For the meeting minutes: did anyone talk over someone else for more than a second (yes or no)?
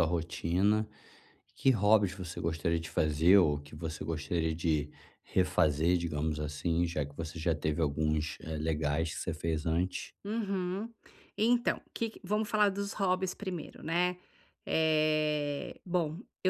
no